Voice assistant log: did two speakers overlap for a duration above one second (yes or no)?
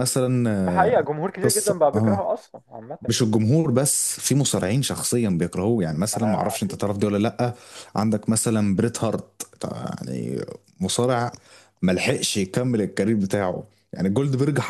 yes